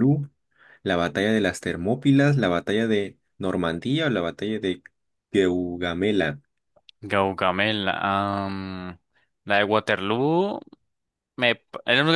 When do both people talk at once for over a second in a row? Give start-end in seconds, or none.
none